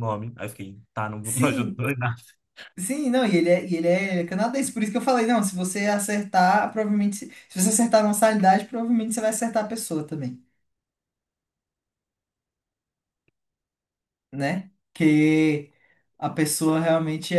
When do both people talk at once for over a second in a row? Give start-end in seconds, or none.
none